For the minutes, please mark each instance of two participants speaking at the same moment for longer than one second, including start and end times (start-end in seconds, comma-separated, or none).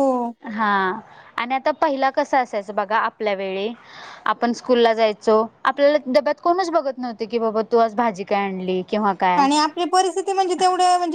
none